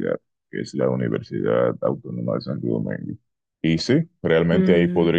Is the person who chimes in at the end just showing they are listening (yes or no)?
yes